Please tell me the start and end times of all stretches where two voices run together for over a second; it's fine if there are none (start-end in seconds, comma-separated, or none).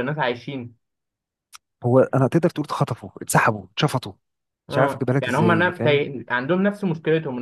4.7-6.1